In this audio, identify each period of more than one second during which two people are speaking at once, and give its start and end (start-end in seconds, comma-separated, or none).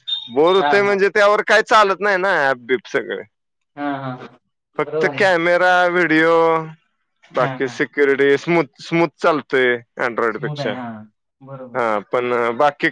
none